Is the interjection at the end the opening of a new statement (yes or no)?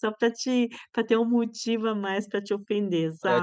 yes